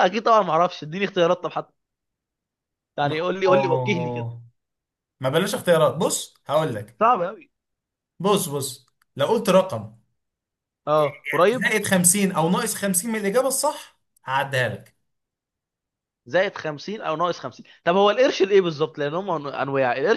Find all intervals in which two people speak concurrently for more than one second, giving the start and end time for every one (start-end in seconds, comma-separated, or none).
3.0-4.3